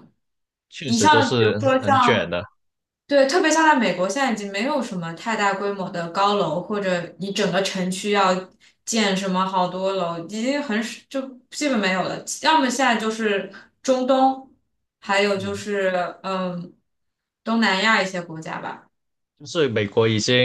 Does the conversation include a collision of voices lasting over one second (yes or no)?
yes